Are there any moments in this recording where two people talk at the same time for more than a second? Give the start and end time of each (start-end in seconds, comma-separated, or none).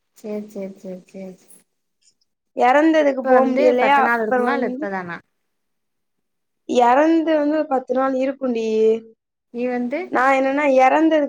3.0-4.9